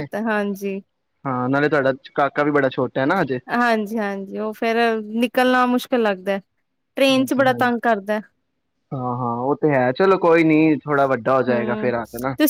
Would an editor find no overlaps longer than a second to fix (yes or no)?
yes